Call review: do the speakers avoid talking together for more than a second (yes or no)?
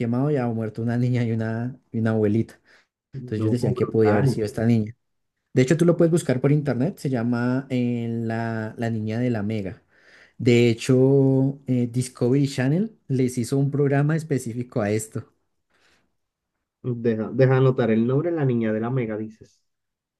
no